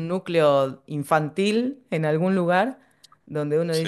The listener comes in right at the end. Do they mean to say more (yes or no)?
no